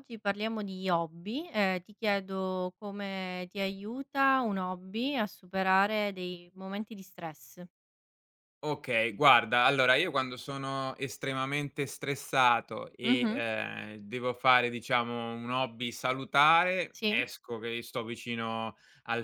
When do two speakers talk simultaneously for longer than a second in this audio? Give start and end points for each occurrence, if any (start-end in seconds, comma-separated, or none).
none